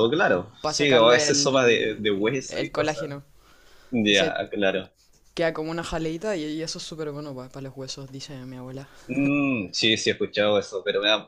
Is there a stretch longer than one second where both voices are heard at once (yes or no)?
yes